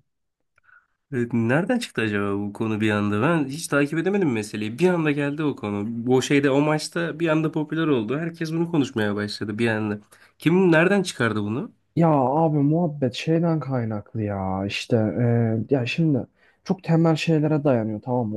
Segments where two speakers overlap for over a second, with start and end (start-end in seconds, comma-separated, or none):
none